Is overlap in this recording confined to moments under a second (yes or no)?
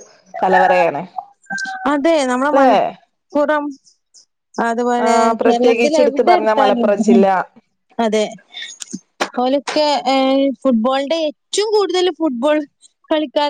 no